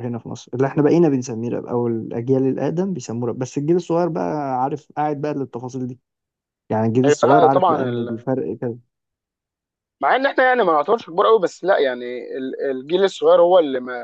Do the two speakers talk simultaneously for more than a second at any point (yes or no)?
yes